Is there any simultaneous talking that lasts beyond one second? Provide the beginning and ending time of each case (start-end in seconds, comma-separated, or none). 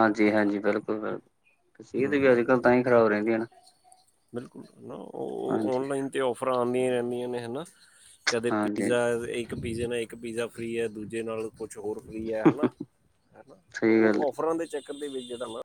none